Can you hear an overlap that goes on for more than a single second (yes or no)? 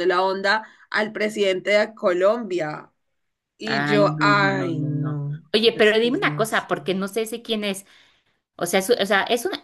yes